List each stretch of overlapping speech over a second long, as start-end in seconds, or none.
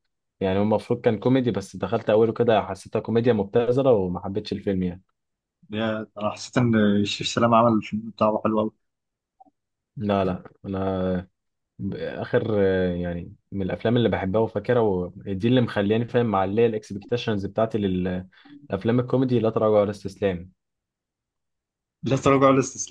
none